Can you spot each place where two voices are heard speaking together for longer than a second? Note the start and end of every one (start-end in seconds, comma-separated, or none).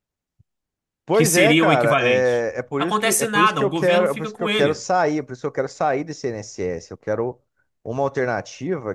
1.1-4.8